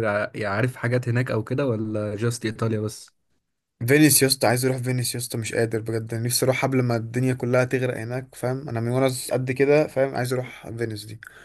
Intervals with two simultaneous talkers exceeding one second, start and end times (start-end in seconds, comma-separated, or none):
none